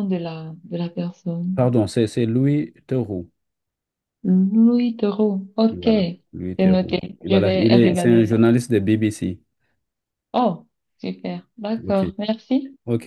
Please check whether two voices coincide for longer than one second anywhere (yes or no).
yes